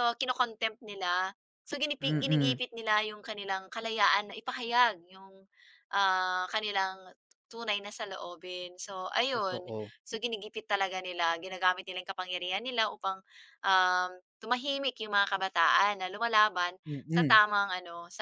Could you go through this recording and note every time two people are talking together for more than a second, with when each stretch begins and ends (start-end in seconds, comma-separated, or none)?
none